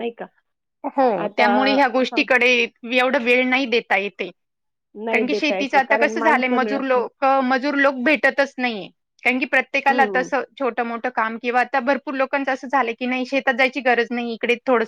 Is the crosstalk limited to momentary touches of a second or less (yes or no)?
no